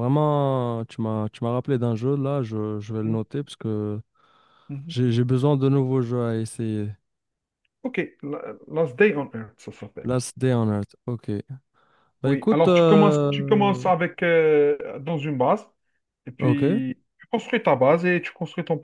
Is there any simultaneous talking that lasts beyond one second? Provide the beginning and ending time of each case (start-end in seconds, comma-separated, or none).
12.2-13.8